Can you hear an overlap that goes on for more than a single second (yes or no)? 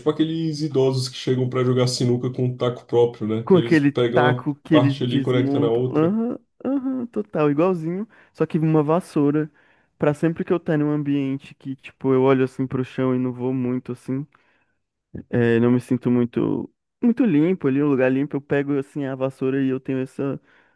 yes